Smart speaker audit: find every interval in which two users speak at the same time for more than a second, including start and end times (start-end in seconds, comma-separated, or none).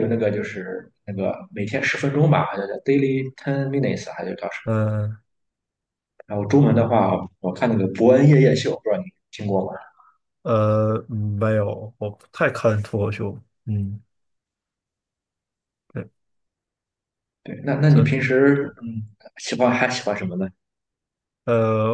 none